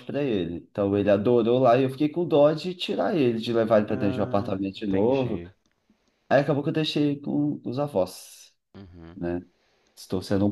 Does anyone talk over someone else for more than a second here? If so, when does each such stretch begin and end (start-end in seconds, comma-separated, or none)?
3.9-5.4